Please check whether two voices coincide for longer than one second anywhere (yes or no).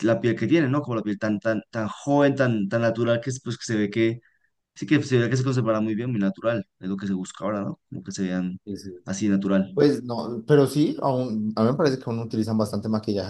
no